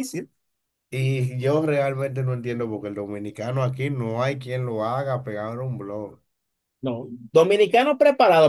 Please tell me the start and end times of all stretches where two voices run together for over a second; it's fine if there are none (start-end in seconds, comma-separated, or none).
none